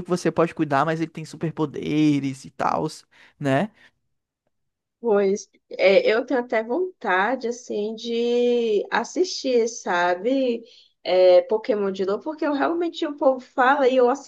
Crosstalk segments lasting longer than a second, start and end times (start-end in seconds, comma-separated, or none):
none